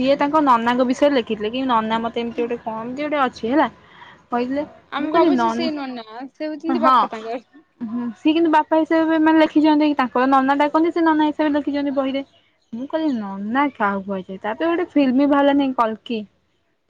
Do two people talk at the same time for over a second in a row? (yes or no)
no